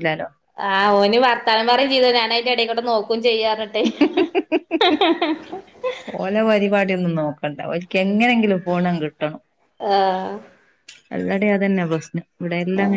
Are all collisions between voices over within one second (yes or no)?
yes